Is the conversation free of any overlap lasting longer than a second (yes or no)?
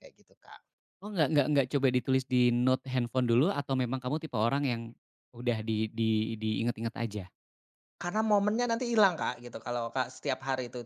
yes